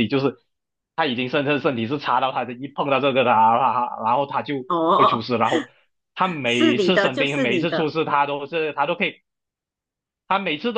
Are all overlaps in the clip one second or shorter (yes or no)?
no